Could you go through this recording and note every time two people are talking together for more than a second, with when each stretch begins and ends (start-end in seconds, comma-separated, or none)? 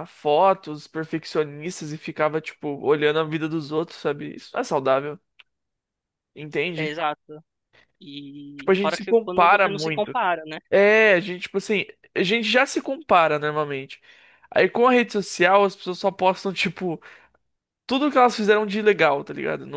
8.6-10.2